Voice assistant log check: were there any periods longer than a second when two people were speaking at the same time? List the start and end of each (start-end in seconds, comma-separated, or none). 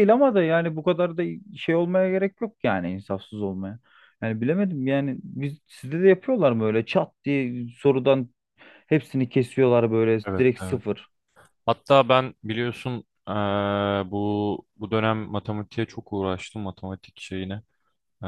none